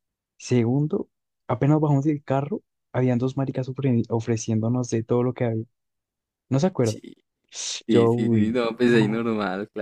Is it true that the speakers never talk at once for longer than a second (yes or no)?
no